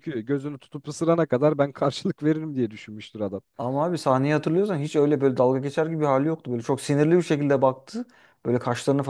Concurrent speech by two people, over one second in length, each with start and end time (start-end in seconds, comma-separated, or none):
none